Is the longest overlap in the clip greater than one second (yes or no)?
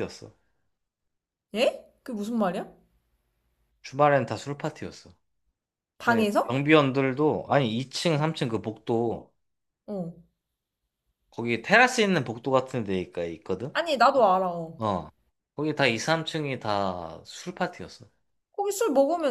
no